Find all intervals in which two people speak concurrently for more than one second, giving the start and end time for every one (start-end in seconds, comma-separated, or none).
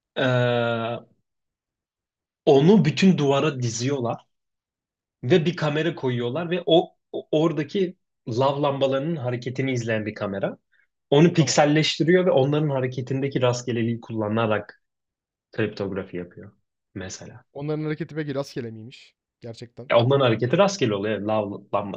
none